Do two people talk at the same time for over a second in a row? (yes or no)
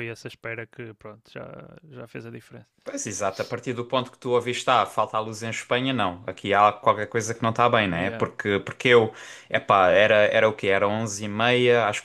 no